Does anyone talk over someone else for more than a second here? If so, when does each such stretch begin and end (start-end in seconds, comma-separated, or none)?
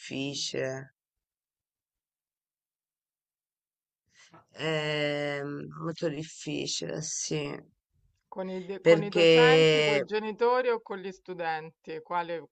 none